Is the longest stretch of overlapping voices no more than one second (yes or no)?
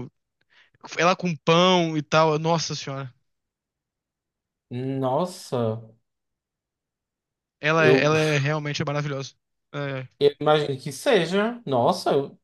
yes